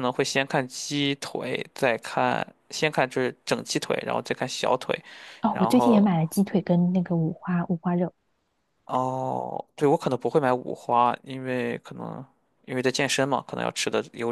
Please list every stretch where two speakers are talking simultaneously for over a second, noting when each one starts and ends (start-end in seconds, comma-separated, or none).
none